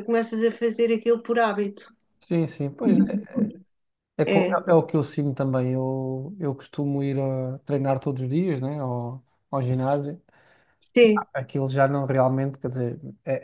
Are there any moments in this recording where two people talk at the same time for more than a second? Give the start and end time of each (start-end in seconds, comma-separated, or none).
none